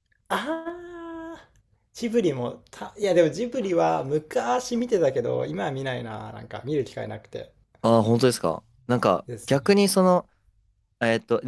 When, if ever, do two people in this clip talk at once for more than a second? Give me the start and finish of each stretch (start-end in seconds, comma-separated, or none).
none